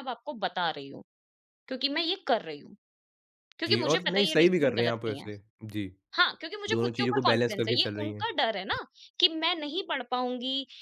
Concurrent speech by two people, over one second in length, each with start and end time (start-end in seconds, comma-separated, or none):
3.7-5.3, 6.7-8.3